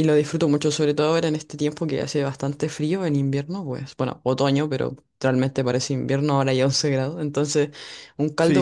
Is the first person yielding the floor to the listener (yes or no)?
yes